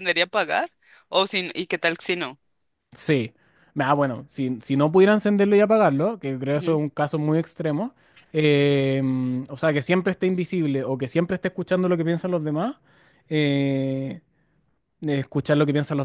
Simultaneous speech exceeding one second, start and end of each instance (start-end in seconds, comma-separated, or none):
none